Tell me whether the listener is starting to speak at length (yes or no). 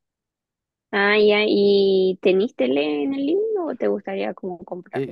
yes